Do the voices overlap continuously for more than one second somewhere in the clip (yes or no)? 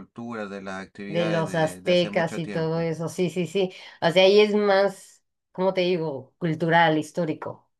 yes